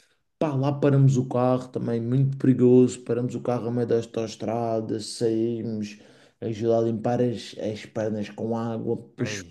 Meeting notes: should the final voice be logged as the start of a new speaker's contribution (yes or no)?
no